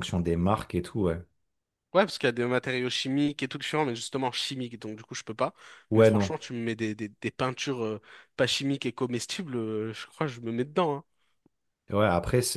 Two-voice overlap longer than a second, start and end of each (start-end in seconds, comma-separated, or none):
none